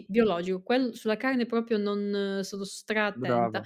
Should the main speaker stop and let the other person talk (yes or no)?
no